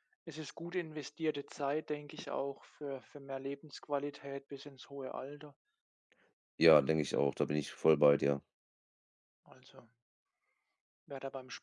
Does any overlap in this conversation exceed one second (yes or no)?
no